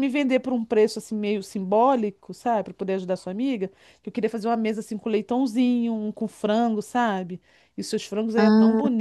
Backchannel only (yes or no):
yes